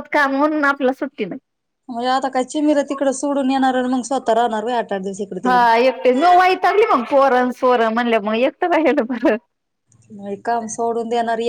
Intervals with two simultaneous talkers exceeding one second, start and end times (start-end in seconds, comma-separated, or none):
none